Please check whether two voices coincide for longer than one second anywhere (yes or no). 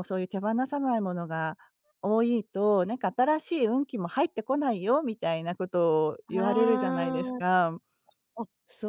yes